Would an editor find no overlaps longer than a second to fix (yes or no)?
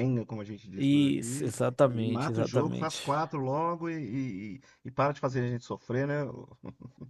no